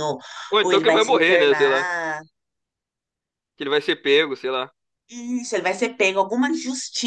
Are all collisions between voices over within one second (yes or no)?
no